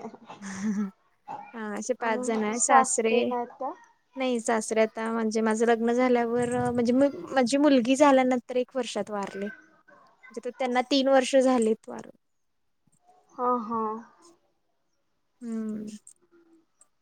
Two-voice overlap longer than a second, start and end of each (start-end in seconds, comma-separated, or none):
2.0-3.3